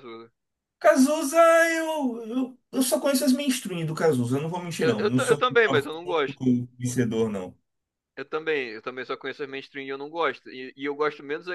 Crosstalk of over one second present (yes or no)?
yes